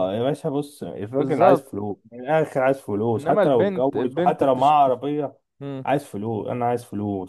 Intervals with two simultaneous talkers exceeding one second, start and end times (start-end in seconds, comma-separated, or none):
3.2-4.7